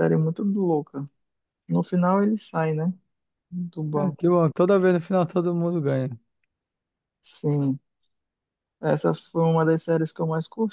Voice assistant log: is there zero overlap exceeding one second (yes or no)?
yes